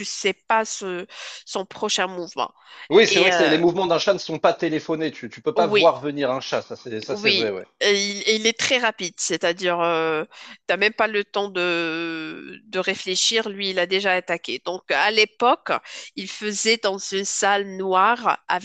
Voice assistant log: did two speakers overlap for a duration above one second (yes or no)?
no